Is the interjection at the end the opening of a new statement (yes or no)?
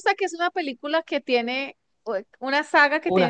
no